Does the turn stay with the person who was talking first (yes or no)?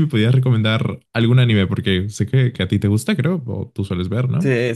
no